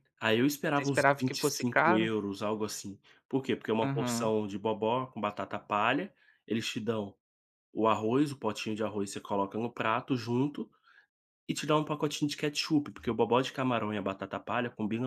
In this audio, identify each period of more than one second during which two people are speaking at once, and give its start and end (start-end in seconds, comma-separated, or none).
0.7-2.1